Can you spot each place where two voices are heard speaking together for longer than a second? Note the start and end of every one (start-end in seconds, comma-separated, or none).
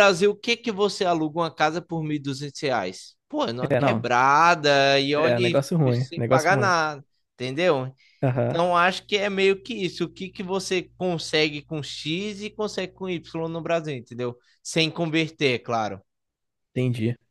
5.2-6.8